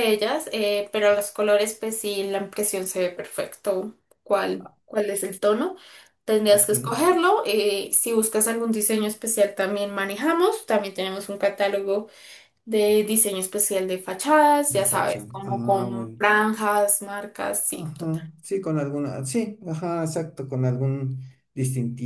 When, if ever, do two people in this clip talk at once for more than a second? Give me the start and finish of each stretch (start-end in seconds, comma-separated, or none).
14.7-16.3